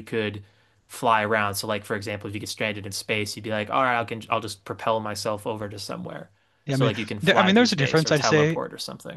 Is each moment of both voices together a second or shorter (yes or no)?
no